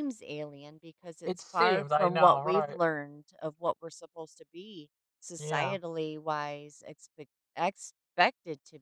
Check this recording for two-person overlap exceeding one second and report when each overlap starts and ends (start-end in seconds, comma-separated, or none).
1.2-2.8